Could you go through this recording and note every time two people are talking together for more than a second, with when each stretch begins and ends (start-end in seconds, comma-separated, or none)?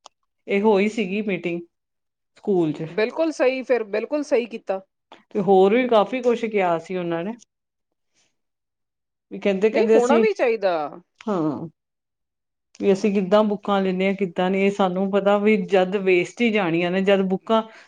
none